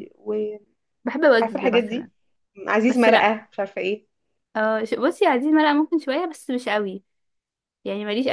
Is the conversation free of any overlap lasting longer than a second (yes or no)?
yes